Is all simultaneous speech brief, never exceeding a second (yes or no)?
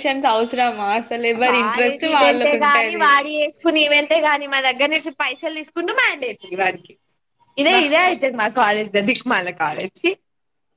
no